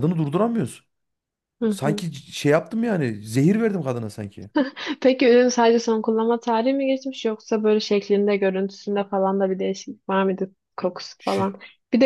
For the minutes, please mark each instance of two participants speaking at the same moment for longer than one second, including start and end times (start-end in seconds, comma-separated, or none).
none